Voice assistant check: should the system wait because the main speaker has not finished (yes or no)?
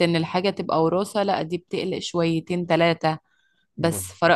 yes